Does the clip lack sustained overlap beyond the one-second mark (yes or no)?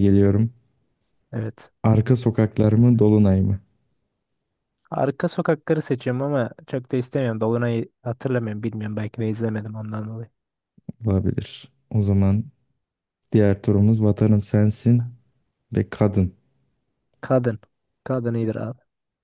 yes